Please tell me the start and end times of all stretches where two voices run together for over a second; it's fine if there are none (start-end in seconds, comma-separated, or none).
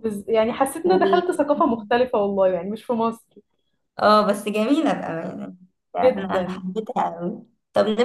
none